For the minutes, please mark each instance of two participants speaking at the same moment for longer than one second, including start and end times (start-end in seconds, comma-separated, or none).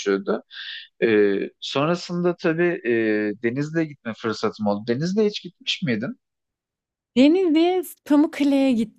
none